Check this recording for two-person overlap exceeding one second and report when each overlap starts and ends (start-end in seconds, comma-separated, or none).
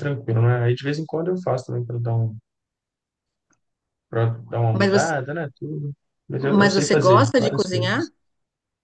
6.4-8.1